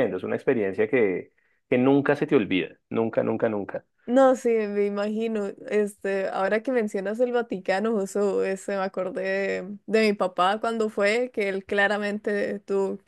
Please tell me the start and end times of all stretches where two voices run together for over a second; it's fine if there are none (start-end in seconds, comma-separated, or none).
none